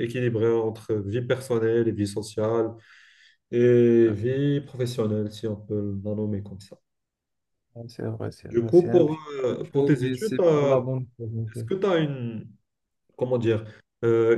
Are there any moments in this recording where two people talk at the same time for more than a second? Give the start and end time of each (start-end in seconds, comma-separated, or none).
8.4-10.9